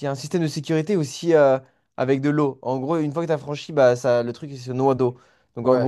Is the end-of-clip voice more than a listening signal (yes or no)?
no